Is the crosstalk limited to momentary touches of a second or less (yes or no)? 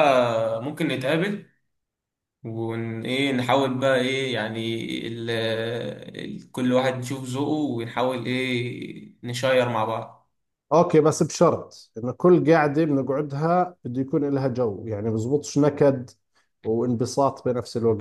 yes